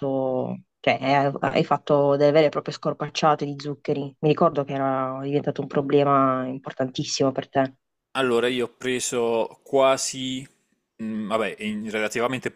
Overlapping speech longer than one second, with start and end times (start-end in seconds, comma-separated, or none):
none